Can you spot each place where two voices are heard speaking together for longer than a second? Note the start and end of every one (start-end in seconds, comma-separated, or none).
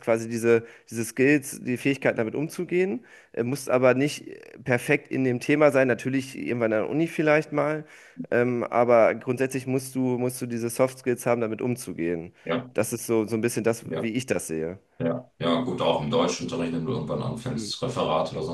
none